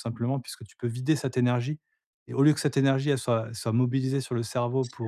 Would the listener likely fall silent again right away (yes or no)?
yes